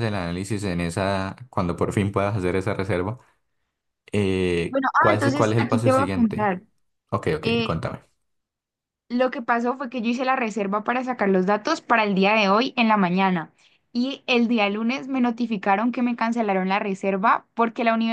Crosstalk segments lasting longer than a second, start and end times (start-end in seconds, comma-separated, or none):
4.7-6.5